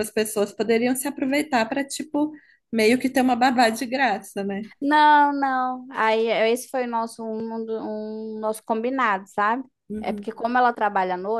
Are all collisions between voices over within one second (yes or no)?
yes